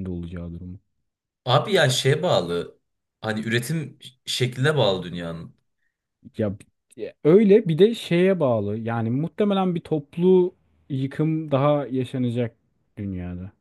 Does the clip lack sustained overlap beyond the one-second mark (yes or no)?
yes